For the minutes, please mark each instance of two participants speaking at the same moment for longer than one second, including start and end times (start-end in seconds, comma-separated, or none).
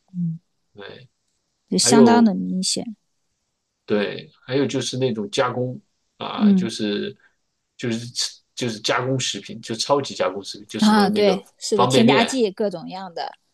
10.8-12.3